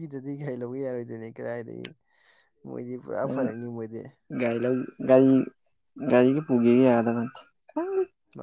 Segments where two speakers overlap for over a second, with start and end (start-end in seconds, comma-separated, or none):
none